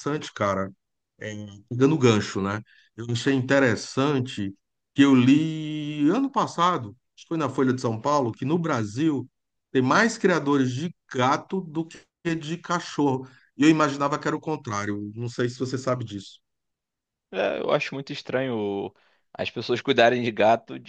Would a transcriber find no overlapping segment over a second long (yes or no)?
yes